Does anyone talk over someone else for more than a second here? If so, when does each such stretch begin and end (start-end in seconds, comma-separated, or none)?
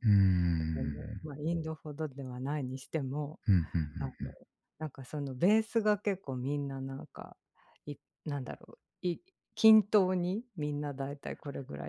none